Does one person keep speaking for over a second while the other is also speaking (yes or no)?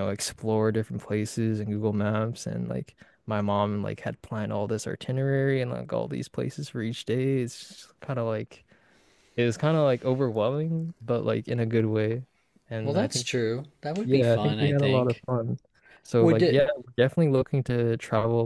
yes